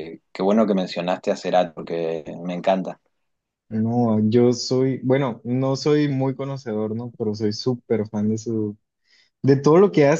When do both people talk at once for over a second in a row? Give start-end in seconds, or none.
none